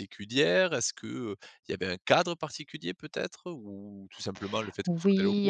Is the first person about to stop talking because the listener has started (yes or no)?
yes